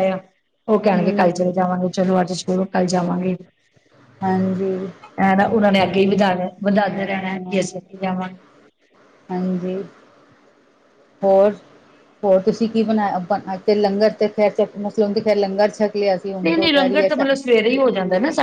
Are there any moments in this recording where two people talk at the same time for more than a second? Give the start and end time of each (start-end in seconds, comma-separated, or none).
none